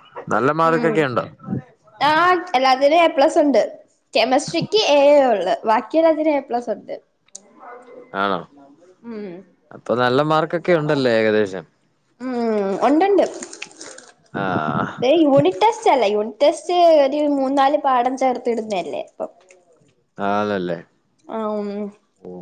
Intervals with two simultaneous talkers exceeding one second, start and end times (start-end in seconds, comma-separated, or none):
none